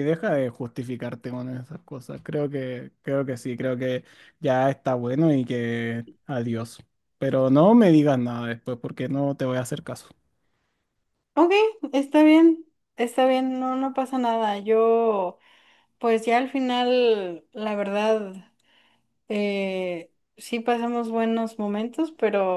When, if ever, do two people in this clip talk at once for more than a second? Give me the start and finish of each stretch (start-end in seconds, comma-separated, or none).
none